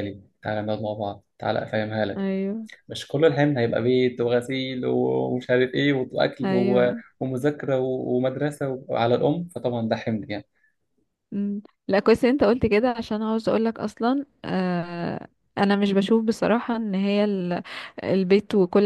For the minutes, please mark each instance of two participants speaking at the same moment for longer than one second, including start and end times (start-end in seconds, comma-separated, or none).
none